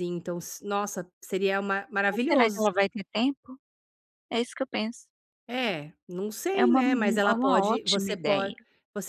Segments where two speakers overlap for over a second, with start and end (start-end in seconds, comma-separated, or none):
6.6-8.6